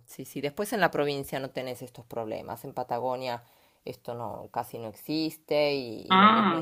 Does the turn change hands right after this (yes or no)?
no